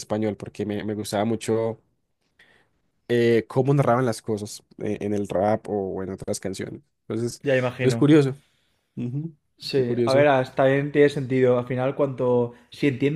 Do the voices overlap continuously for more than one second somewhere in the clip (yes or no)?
no